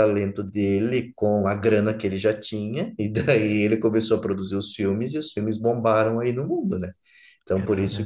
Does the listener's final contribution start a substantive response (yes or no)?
no